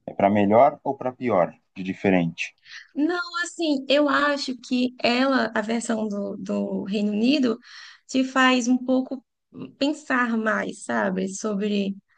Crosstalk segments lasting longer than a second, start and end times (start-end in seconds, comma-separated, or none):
none